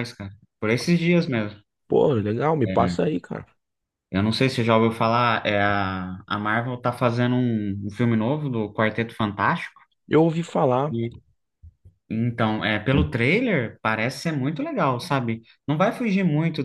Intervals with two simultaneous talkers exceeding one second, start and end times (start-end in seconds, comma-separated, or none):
none